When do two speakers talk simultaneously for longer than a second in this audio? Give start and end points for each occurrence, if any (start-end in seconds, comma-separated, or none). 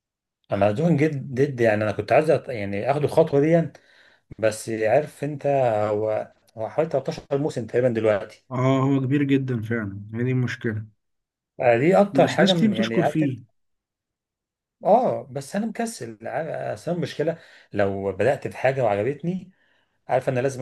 12.1-13.4